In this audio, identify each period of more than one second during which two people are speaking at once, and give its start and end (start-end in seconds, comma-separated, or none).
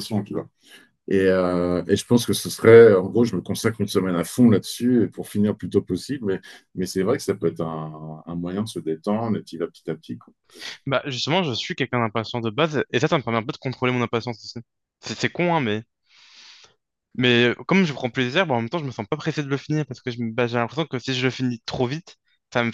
none